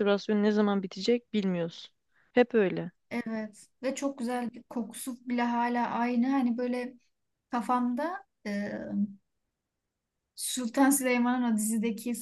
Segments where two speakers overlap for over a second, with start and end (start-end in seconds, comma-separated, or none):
none